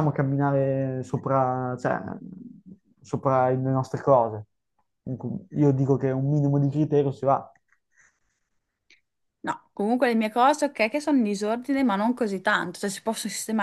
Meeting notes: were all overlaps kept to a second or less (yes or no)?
yes